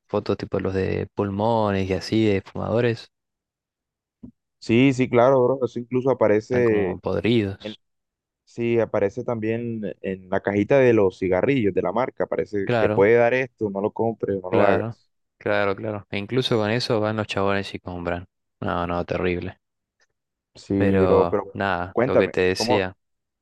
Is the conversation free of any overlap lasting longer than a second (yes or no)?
no